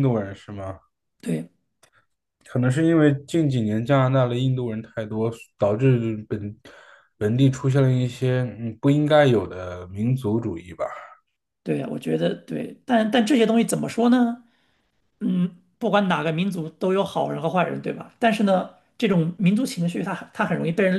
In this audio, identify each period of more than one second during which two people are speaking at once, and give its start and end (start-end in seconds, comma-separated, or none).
none